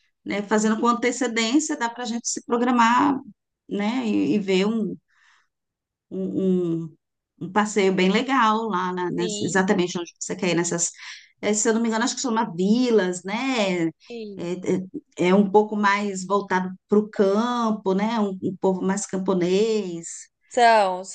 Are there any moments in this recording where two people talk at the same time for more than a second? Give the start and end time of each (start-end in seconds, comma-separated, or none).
none